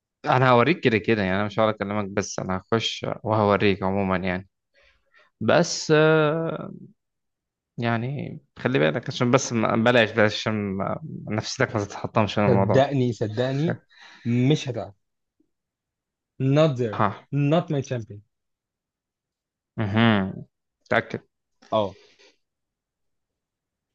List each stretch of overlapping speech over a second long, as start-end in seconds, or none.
none